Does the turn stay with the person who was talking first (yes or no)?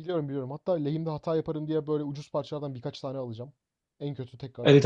no